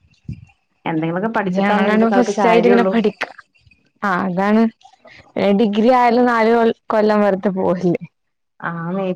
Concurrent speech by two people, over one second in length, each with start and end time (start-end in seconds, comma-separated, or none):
1.6-2.9